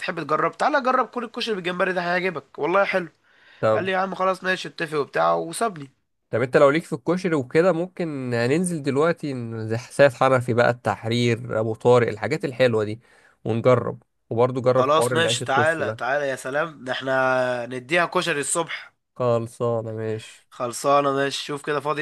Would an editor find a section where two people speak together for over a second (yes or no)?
yes